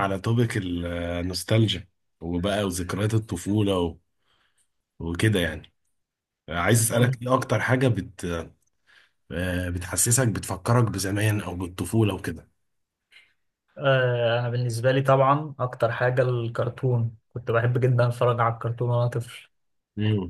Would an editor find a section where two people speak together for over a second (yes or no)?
no